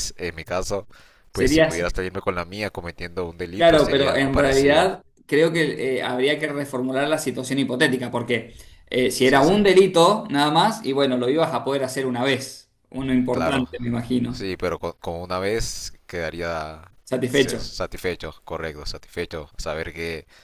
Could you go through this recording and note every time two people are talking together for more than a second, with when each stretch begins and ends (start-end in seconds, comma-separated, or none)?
3.5-4.9